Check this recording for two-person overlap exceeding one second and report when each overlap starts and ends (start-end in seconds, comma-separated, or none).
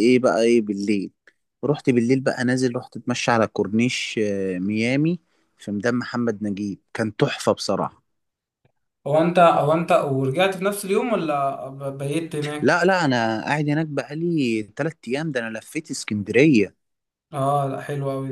none